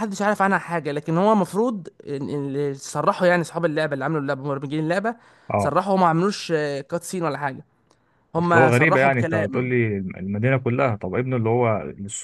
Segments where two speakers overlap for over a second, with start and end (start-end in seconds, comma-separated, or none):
8.4-9.7